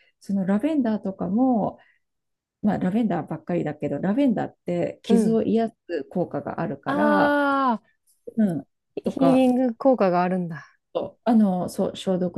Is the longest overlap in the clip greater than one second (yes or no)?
no